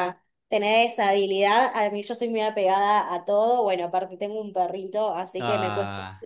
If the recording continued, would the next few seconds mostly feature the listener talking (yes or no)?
no